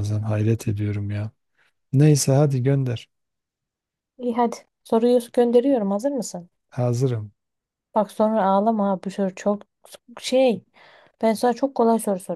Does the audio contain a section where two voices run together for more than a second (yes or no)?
no